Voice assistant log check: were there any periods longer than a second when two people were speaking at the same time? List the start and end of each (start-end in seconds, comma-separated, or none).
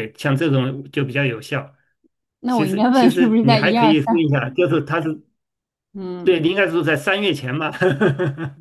2.5-4.3